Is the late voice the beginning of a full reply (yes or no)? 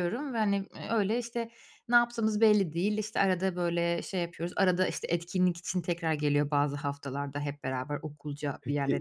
yes